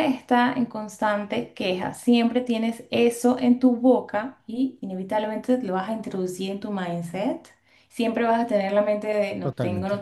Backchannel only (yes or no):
yes